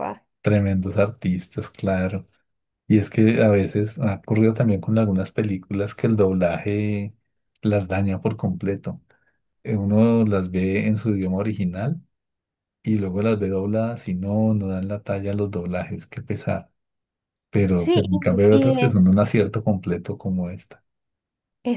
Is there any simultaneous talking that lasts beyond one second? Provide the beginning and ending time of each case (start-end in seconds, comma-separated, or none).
17.7-19.0